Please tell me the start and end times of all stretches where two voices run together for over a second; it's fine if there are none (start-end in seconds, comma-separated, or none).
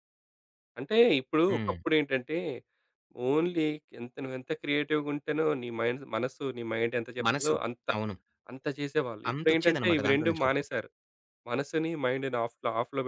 9.3-10.8